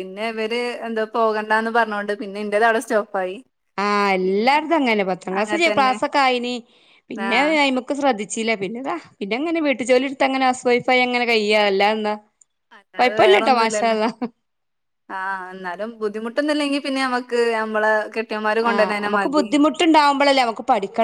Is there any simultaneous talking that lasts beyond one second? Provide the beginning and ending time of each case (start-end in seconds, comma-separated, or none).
none